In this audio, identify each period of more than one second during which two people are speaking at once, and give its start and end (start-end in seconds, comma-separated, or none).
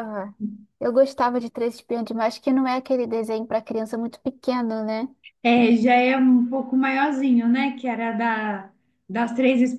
none